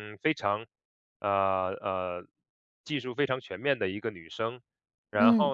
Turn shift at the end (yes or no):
no